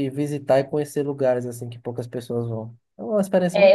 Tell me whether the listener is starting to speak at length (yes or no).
yes